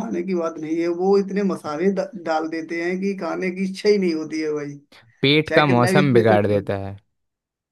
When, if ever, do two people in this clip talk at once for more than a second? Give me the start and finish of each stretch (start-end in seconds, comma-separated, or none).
5.5-6.7